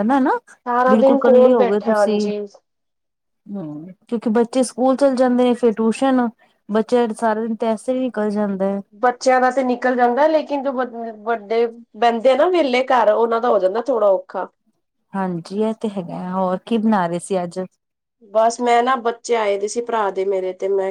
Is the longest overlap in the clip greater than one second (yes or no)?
yes